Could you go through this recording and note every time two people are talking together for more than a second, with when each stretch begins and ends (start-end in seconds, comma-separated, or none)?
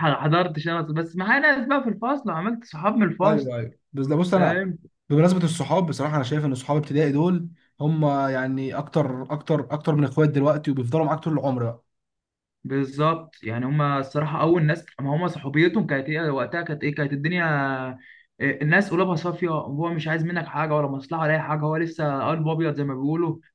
none